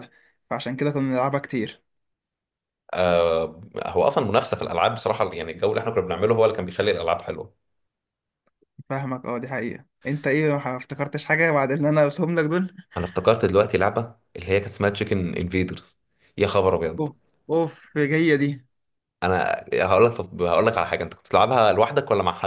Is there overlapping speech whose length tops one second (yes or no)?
no